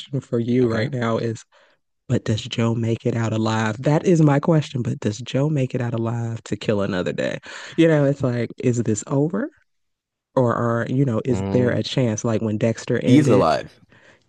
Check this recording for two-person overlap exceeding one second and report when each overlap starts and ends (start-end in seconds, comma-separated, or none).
none